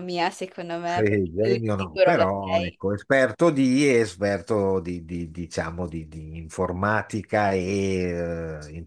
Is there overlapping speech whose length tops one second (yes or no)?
yes